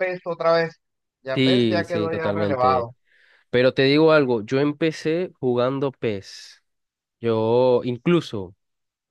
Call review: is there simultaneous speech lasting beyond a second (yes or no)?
yes